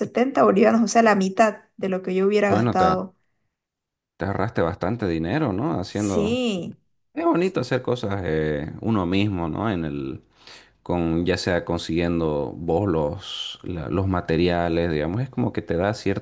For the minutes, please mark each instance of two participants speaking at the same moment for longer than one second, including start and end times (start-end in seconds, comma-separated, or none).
none